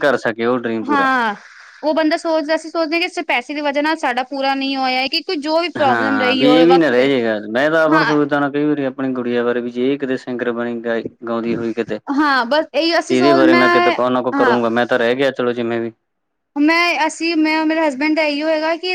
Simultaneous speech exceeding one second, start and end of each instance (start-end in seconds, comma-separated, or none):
5.9-7.1